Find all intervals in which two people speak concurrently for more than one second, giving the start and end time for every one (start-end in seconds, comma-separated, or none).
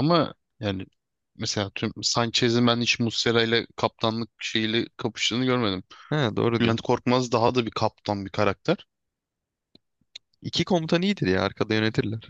none